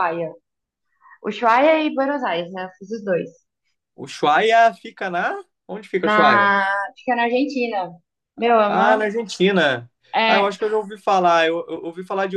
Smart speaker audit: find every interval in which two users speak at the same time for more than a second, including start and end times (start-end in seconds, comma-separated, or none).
none